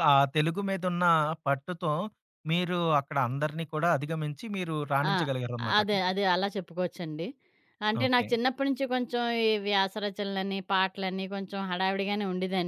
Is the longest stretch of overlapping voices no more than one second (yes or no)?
yes